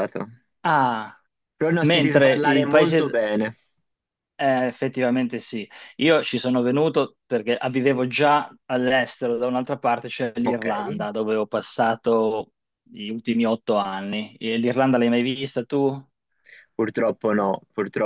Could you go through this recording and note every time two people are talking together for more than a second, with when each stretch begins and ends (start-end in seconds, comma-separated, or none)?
1.8-3.2